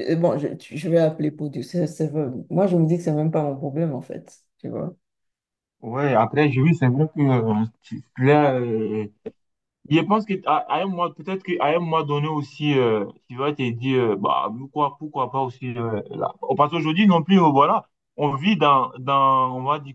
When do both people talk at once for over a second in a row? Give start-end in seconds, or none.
none